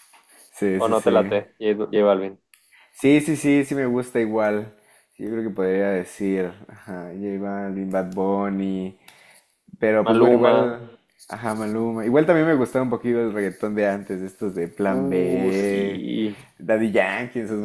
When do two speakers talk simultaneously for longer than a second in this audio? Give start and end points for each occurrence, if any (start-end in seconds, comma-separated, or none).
14.8-16.1